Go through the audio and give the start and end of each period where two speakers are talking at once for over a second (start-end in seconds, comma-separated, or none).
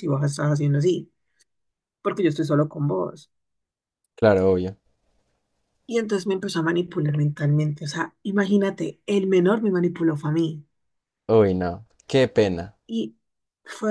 none